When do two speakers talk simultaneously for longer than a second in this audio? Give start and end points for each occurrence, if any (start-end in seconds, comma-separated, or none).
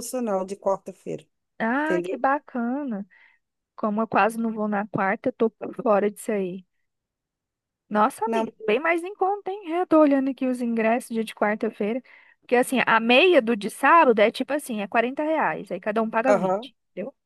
none